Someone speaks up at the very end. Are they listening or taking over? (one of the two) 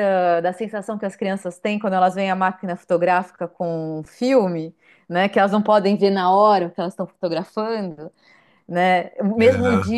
listening